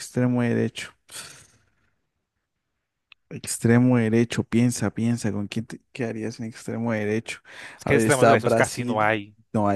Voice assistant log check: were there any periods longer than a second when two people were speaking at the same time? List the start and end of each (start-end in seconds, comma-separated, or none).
7.8-9.1